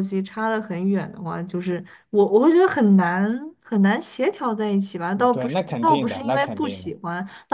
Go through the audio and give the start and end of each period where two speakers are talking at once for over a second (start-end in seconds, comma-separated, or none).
5.2-6.9